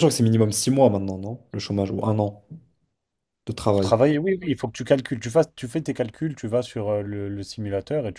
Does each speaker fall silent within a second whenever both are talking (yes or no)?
yes